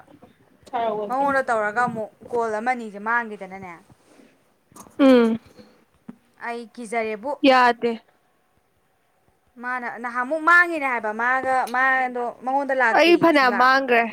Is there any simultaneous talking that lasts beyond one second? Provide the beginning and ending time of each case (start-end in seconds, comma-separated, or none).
none